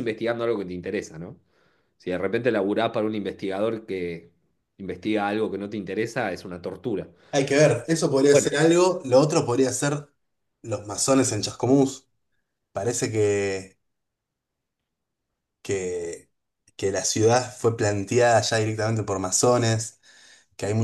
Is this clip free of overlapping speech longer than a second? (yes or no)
yes